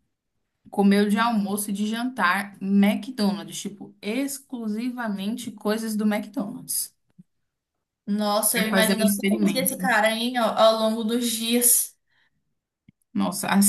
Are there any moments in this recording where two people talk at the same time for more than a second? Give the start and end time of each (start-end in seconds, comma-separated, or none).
8.5-9.8